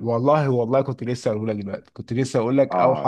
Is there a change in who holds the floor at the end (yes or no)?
yes